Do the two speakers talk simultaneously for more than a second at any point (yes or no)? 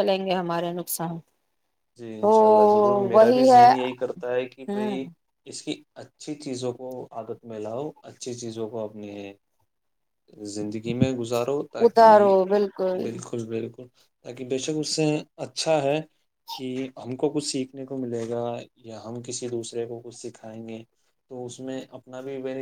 no